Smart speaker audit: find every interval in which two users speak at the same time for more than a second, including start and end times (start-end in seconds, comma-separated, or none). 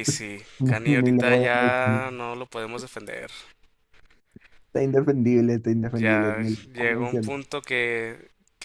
0.6-2.0, 5.9-7.3